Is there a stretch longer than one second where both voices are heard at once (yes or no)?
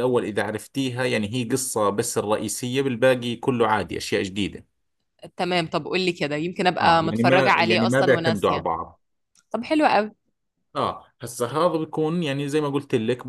yes